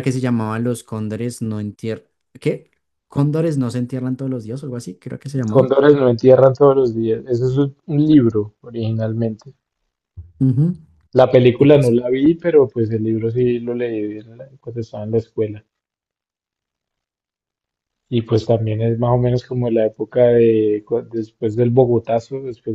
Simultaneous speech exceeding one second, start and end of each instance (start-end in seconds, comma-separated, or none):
none